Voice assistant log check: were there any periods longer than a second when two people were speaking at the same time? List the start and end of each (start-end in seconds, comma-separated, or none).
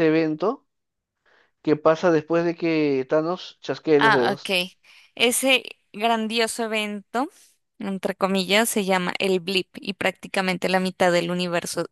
none